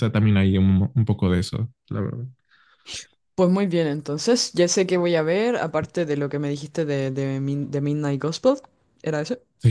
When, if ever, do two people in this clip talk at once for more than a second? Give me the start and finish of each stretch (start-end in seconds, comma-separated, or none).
none